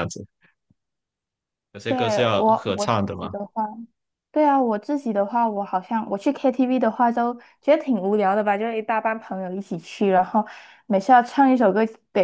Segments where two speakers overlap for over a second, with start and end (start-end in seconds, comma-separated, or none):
1.9-3.3